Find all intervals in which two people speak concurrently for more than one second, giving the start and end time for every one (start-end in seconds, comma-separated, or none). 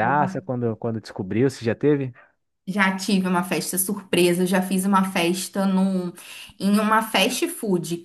none